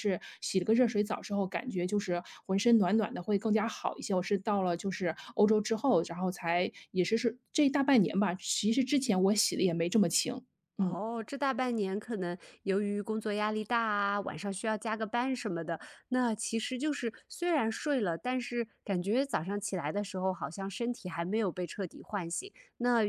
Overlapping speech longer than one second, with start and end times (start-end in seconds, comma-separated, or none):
none